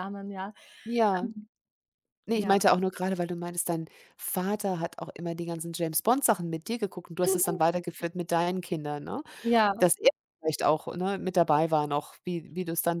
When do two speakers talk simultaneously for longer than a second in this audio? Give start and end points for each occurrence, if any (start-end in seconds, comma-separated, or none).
none